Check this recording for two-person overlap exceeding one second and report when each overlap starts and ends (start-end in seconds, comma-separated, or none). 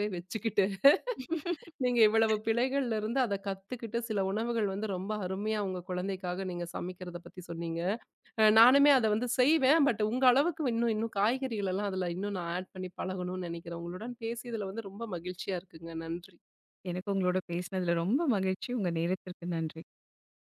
none